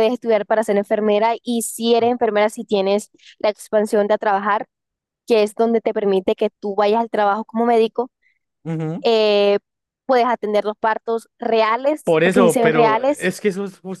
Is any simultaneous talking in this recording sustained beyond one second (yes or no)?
yes